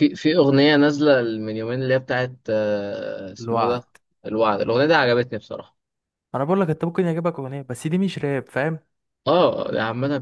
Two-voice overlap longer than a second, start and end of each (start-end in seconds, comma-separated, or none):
none